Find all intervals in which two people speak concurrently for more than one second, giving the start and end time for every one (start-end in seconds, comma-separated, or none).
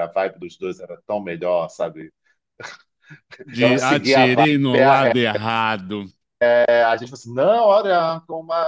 3.6-5.1